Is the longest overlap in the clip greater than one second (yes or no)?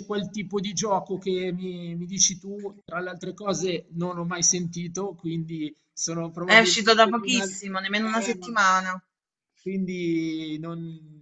yes